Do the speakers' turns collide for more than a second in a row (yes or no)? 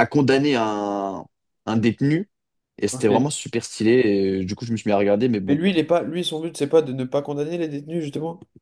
no